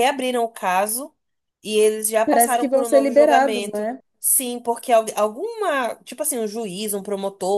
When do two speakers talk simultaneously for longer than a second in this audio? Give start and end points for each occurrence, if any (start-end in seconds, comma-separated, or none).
2.2-4.0